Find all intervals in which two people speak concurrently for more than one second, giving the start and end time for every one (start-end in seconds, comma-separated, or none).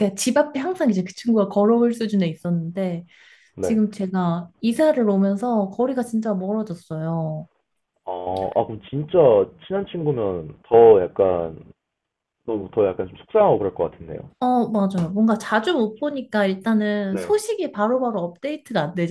none